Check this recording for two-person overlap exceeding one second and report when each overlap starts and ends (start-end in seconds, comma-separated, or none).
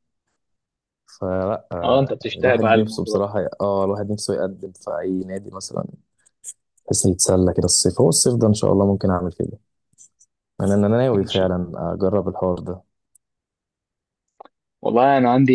1.8-3.3